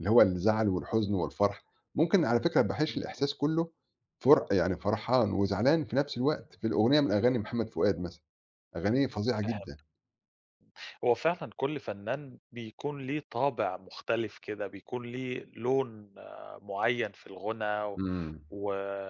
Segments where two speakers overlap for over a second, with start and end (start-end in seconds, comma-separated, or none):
none